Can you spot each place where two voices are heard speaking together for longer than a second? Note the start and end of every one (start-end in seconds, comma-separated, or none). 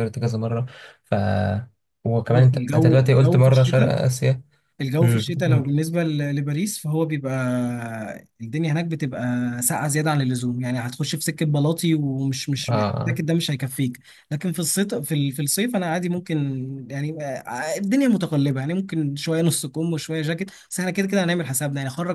2.3-3.9